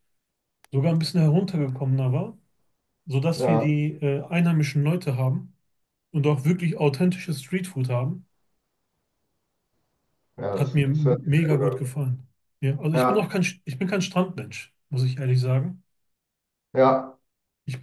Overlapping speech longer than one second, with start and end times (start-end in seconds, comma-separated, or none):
10.6-11.9